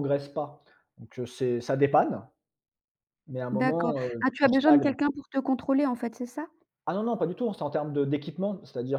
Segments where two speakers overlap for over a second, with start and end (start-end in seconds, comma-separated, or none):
3.5-4.9